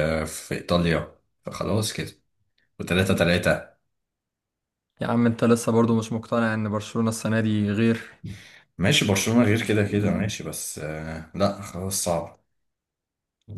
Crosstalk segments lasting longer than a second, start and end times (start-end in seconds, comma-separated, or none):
none